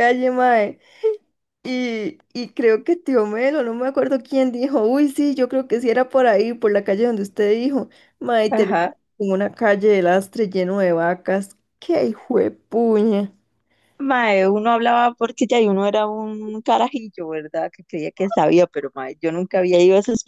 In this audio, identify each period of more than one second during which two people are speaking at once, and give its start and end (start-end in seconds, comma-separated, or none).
none